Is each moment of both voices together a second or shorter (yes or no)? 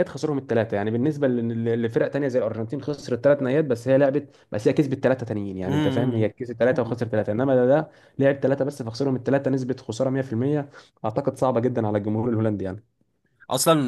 no